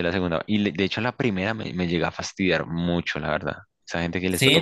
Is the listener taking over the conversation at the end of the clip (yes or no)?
yes